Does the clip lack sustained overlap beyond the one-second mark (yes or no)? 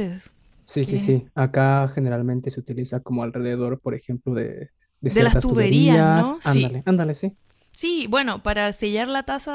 no